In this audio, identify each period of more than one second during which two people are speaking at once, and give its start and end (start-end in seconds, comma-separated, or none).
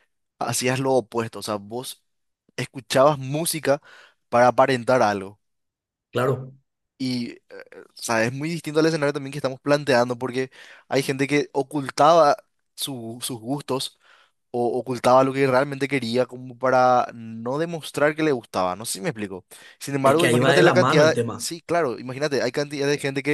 20.1-21.5